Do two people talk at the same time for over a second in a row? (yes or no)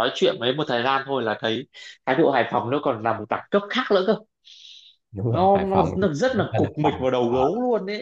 yes